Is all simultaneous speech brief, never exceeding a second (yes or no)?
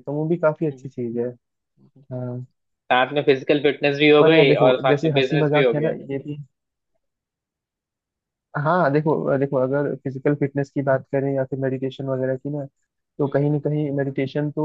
no